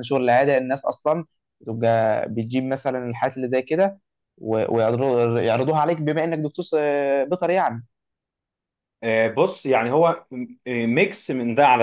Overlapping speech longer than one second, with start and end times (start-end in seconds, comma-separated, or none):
none